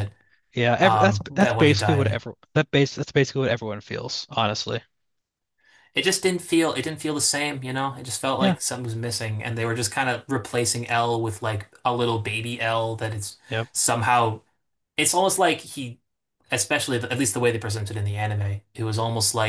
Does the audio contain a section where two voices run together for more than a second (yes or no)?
yes